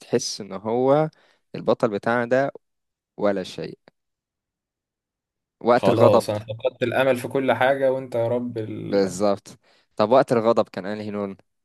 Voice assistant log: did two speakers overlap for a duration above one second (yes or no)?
no